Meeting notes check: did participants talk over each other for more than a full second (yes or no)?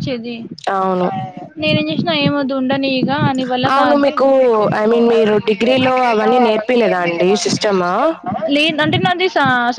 yes